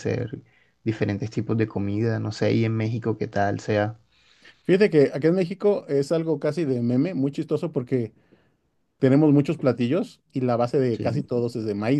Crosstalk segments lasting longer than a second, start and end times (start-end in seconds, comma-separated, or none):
none